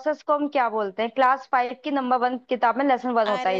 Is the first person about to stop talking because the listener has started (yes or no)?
yes